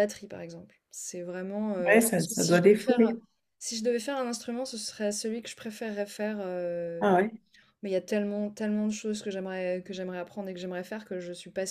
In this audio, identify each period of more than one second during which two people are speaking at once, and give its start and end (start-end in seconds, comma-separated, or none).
1.9-3.2